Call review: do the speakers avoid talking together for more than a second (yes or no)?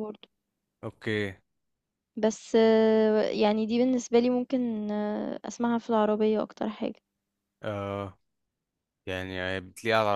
yes